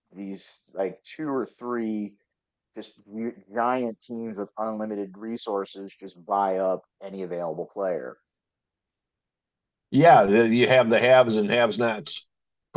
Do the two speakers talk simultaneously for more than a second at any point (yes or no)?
no